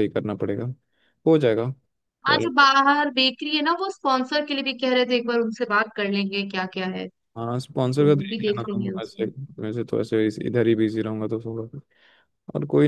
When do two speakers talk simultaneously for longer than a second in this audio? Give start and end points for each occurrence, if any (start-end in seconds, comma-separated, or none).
7.8-9.2